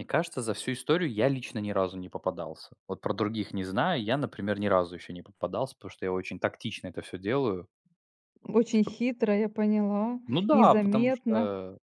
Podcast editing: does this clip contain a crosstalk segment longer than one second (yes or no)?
yes